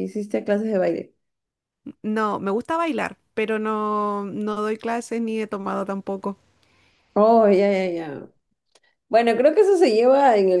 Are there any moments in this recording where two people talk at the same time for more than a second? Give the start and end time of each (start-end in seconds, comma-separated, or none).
none